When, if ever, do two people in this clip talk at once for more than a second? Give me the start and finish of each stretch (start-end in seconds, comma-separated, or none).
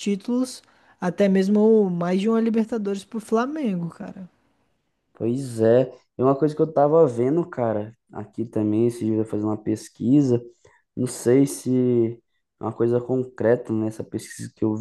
none